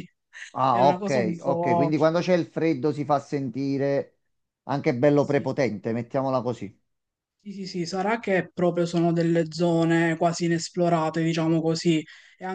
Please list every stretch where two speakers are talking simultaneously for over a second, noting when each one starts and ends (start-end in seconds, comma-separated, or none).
0.7-1.9